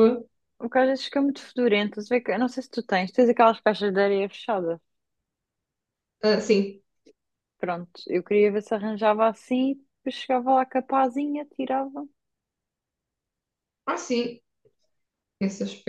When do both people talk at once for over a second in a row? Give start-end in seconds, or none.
none